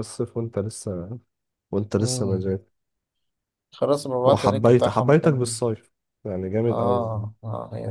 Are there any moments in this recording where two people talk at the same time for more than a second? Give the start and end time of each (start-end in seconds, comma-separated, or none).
4.3-5.5